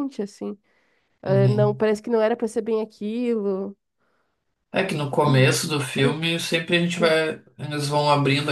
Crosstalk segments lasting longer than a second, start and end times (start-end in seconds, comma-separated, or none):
none